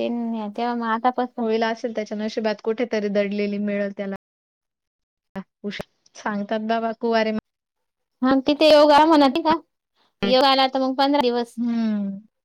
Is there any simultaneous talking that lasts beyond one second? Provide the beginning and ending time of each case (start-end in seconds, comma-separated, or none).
none